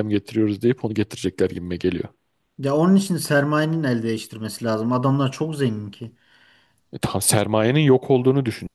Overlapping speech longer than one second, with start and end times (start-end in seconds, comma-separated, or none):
none